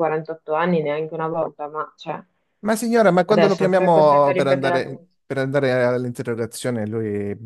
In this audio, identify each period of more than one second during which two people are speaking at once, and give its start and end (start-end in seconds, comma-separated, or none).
3.3-4.8